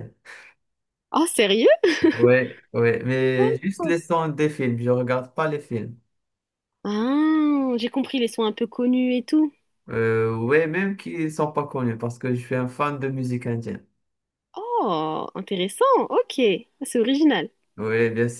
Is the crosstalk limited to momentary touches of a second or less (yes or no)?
yes